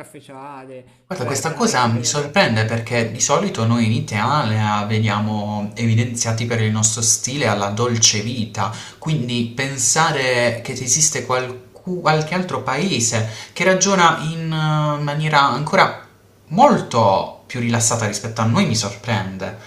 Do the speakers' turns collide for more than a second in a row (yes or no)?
yes